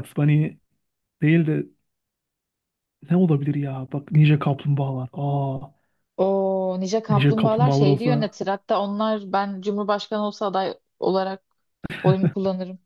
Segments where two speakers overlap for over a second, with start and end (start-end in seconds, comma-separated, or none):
7.1-8.3